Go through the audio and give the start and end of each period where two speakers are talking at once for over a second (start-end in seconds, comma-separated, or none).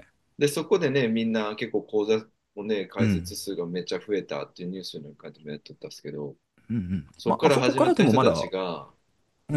7.2-8.5